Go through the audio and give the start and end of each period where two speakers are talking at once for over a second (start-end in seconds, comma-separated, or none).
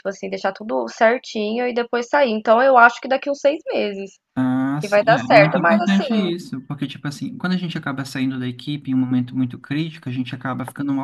4.8-6.3